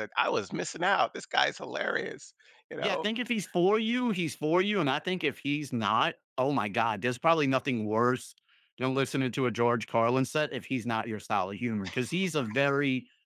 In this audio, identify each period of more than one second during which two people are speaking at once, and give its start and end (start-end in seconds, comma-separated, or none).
none